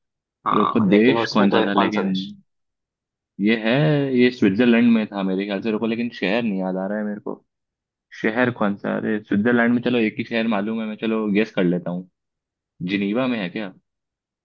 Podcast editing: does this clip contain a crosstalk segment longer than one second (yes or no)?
yes